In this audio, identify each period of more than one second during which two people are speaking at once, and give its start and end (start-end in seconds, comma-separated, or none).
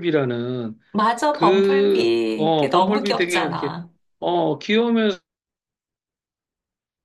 1.3-3.8